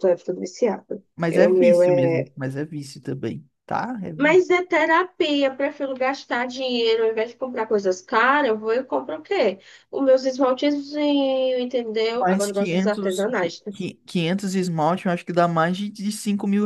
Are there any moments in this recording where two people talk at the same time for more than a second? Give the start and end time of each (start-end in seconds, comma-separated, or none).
12.1-13.7